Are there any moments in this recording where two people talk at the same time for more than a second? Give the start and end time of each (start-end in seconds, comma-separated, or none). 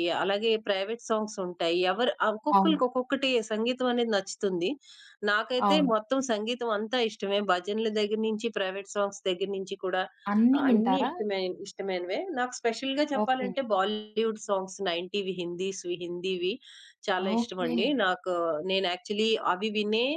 none